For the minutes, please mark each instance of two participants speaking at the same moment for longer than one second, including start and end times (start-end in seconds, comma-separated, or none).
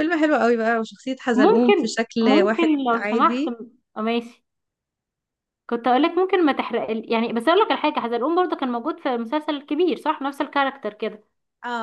1.3-3.5